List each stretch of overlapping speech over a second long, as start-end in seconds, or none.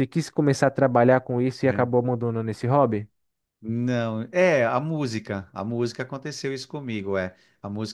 none